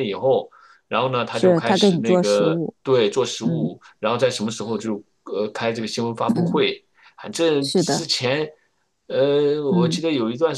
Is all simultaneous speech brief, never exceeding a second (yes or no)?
no